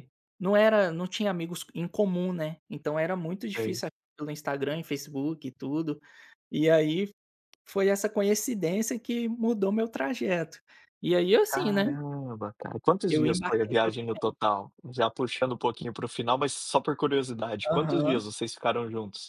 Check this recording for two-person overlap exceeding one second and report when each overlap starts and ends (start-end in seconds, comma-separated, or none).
13.1-14.5